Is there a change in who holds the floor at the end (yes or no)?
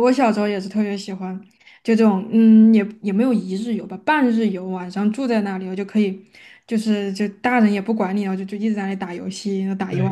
yes